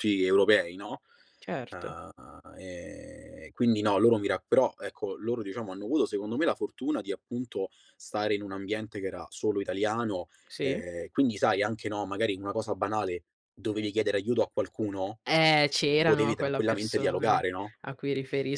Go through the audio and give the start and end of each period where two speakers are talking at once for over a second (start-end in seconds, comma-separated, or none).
16.0-17.4